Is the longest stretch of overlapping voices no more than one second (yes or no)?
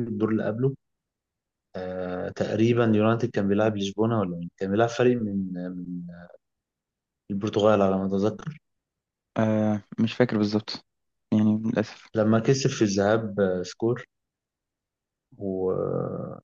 yes